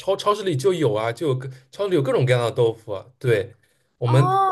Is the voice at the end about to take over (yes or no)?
no